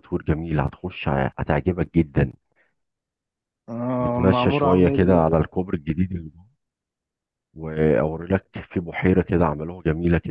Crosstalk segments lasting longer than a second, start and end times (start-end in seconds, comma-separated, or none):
4.0-5.3